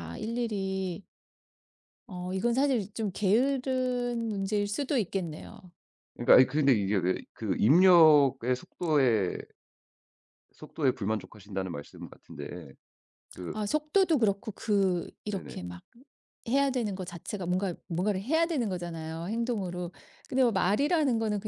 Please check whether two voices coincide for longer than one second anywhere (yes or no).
no